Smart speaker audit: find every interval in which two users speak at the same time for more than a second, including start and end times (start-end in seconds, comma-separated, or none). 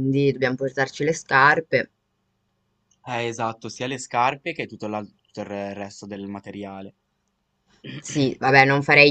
none